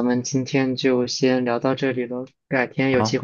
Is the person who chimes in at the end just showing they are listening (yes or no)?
yes